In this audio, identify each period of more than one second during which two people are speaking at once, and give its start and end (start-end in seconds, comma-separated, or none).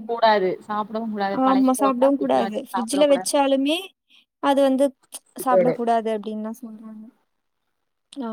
1.5-3.1